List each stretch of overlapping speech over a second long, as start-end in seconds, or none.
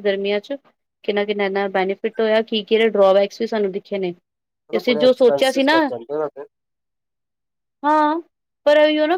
4.5-5.8